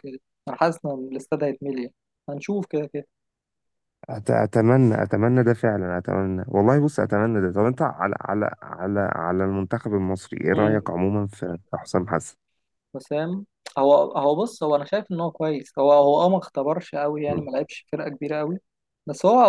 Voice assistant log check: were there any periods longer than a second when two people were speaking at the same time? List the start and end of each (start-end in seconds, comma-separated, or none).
none